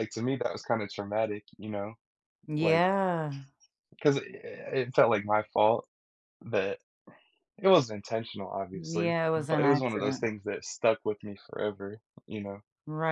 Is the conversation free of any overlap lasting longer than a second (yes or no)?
no